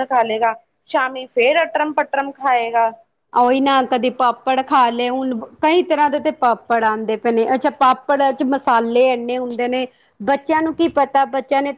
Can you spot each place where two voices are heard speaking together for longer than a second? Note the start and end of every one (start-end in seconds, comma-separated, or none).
none